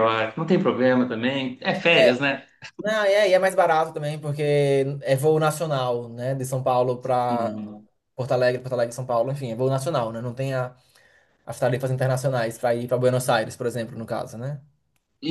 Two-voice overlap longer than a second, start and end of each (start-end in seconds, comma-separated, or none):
none